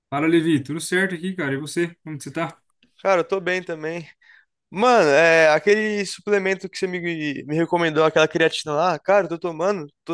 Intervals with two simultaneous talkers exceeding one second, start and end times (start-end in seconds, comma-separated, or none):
none